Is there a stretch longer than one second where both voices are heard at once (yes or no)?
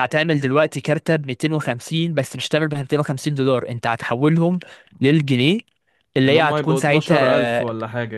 yes